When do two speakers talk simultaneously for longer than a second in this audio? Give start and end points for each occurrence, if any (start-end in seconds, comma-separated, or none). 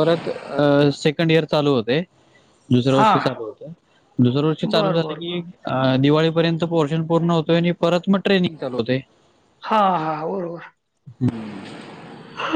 none